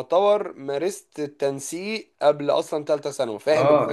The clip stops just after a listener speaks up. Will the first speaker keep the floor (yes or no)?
no